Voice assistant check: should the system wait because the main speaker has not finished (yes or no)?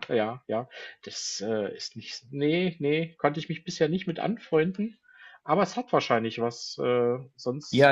no